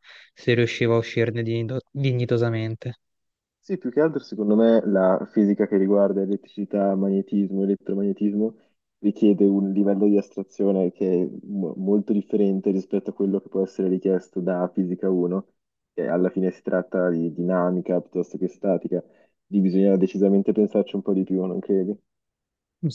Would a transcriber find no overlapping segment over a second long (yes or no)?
yes